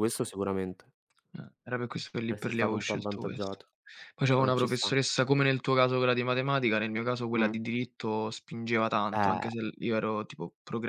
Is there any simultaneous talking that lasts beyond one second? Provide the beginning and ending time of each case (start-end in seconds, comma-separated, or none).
2.3-3.6